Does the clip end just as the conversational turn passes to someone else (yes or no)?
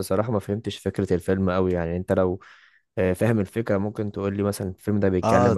yes